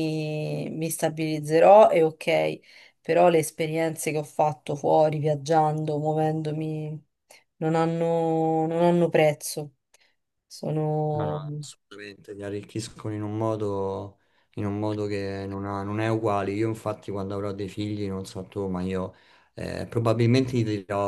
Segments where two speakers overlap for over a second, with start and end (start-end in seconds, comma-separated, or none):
none